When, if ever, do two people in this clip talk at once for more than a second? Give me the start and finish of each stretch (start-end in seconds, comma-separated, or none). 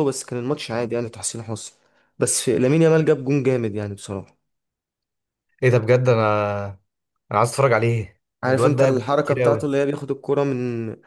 8.4-9.7